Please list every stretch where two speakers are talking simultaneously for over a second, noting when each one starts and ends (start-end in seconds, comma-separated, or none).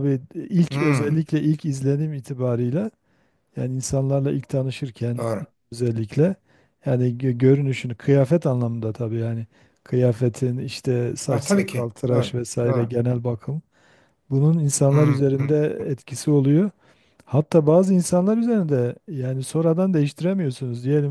11.3-12.9